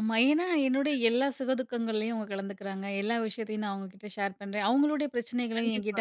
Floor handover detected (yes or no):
no